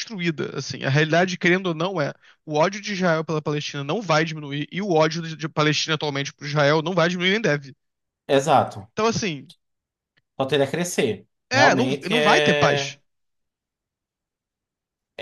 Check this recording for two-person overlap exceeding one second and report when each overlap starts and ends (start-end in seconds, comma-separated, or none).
11.5-13.0